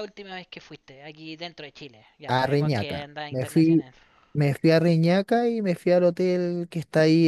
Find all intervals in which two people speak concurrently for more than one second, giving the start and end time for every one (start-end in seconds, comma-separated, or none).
2.3-3.9